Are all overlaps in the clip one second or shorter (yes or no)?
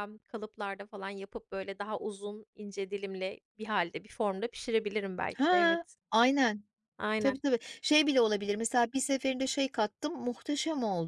yes